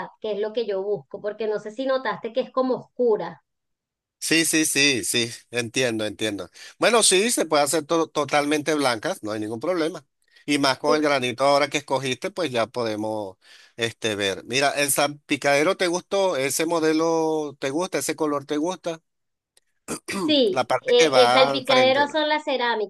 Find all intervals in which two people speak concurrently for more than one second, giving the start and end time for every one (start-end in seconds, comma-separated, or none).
20.5-22.2